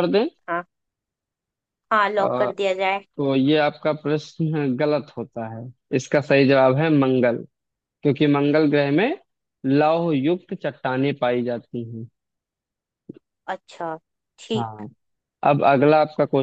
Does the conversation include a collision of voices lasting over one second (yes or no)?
no